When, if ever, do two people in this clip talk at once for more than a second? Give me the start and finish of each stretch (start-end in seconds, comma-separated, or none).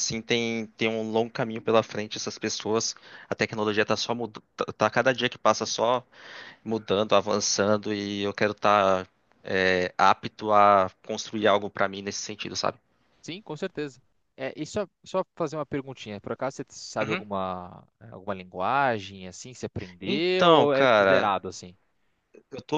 20.0-21.3